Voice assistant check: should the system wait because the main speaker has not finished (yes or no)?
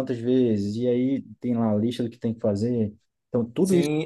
no